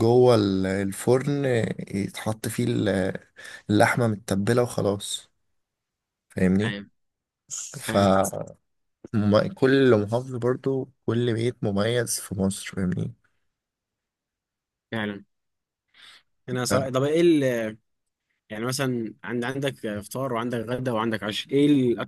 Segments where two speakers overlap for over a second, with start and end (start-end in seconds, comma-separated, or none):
none